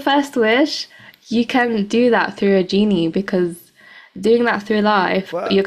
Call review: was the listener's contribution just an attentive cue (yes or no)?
no